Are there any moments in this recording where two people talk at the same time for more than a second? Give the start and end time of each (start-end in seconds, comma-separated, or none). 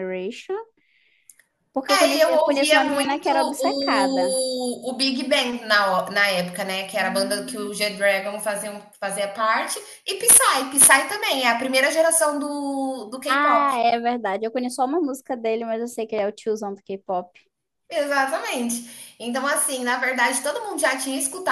1.9-4.4